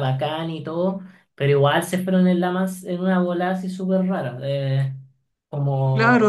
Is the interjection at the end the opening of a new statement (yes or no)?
yes